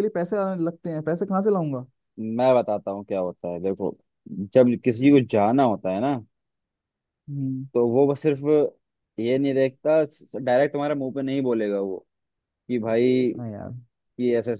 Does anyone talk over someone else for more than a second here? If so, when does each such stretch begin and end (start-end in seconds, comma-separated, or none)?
none